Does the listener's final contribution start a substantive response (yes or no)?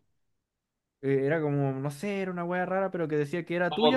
yes